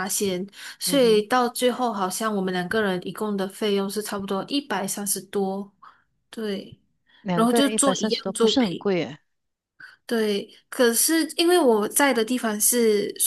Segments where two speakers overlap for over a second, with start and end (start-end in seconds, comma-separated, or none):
7.3-8.9